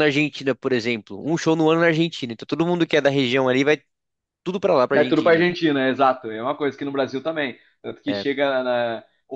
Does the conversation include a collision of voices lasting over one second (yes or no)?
no